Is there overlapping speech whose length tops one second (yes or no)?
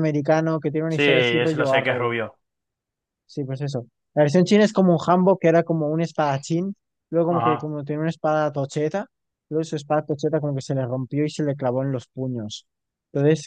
yes